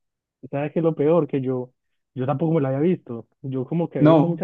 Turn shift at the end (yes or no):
no